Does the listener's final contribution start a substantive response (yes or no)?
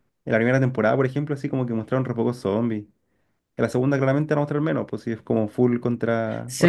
yes